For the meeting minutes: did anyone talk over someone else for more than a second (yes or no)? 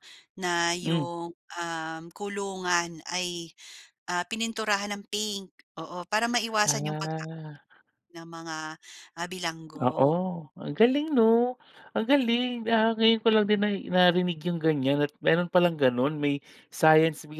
no